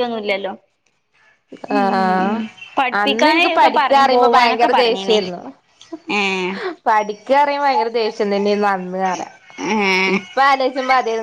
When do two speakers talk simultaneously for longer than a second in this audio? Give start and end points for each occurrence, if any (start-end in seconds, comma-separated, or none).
3.0-5.2